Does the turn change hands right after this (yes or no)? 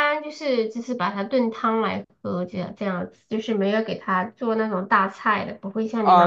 yes